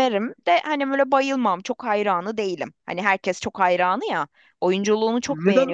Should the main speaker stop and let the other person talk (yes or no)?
yes